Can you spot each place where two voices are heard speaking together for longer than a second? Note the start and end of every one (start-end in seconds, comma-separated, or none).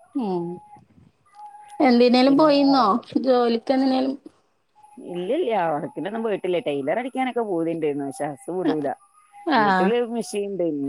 none